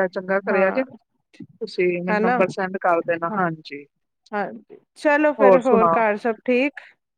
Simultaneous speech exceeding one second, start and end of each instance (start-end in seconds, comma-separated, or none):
none